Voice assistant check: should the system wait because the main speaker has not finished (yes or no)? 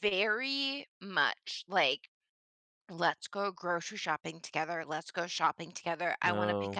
yes